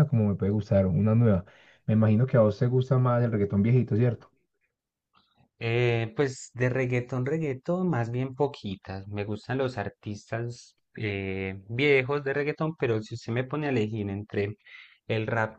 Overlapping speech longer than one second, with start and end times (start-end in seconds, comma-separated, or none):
none